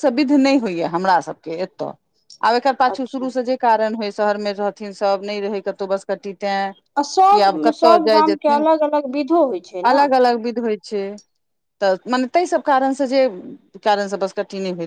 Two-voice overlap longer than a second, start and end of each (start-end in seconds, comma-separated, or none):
7.0-8.7